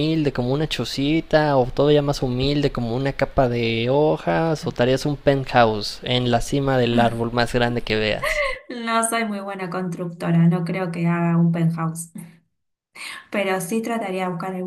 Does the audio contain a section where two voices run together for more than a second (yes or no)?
no